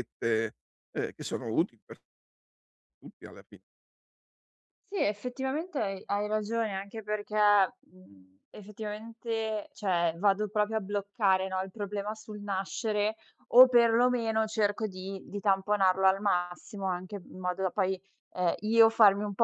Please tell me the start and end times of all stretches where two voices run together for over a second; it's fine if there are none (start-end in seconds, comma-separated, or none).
none